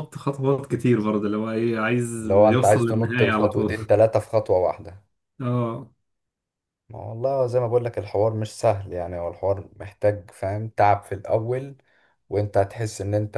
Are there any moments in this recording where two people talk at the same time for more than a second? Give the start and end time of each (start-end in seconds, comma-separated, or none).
2.5-3.7